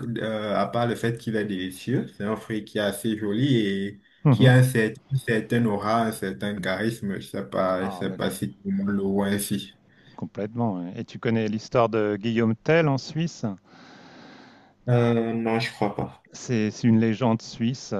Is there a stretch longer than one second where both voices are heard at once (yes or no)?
no